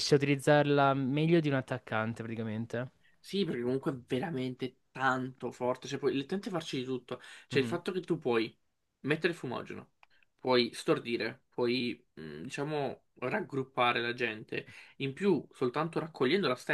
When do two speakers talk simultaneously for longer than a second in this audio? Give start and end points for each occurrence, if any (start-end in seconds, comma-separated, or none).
none